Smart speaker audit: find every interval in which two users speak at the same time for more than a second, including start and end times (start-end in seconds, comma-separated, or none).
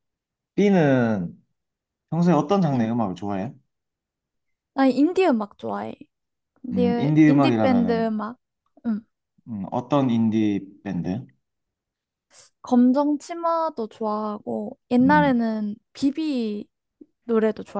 6.7-8.1